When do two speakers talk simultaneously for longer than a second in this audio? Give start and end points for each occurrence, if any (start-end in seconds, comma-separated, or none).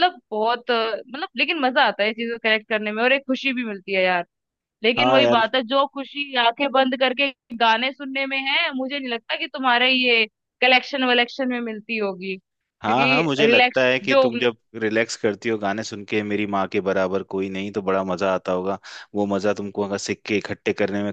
12.8-14.3